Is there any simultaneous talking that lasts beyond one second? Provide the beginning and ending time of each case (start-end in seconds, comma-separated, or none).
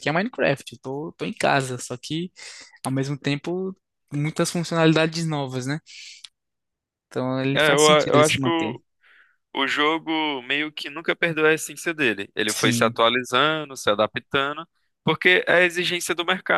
7.5-8.8